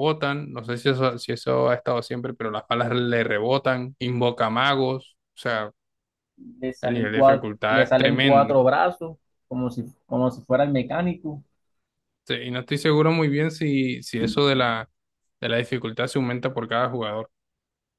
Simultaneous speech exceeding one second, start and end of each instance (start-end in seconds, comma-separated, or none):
6.8-8.6